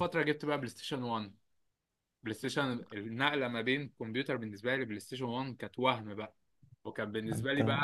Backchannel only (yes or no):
yes